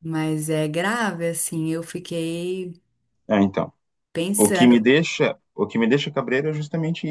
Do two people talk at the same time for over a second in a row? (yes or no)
no